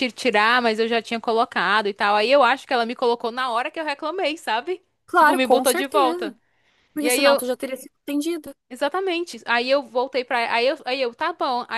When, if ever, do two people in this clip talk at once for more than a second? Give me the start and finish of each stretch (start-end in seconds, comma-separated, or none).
5.0-6.3